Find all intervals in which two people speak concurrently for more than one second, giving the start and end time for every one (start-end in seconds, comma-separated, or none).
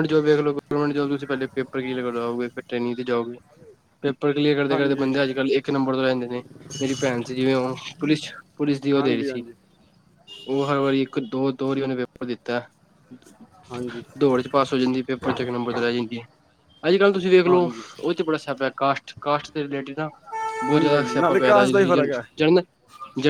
20.7-22.4